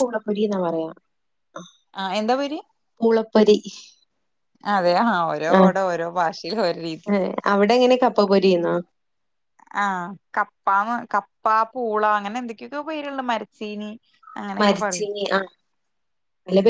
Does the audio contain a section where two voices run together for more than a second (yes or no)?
no